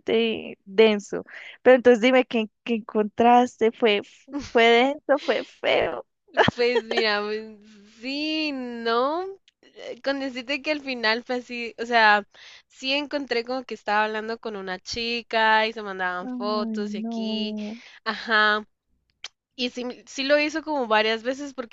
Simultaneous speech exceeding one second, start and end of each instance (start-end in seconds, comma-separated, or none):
16.2-17.6